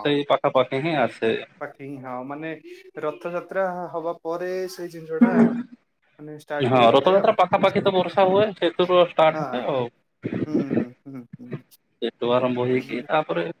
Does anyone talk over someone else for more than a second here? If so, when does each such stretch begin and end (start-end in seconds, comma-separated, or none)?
6.7-9.7